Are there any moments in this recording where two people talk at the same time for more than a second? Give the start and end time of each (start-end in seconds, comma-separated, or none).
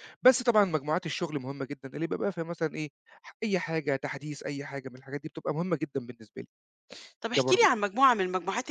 none